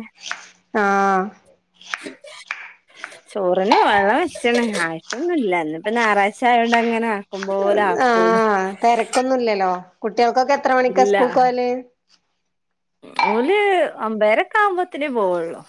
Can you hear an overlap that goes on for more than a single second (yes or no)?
no